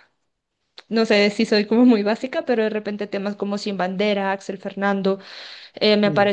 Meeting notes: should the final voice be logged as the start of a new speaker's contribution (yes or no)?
no